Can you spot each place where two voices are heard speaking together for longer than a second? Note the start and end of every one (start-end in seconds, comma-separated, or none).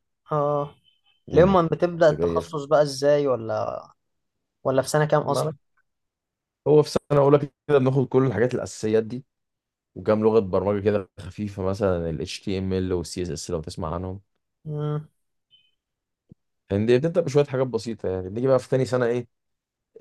1.3-2.6